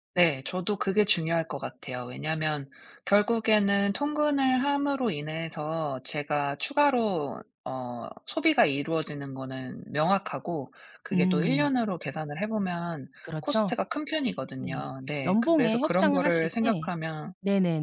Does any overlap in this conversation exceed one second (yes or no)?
yes